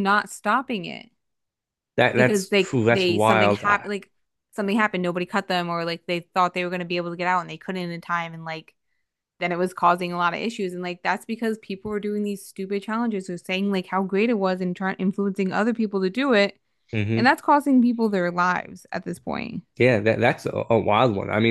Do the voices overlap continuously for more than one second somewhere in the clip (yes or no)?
yes